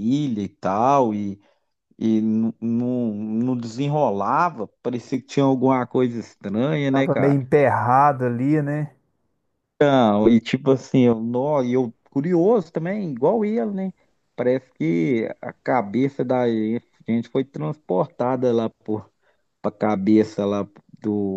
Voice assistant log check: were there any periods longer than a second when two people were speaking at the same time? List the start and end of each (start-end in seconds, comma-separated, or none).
none